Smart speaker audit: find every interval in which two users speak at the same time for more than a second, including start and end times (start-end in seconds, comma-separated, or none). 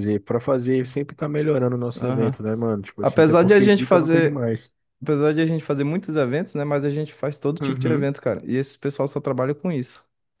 3.0-4.4